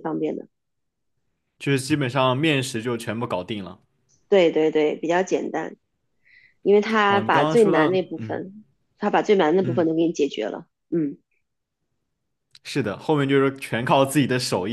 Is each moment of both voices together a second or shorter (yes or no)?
no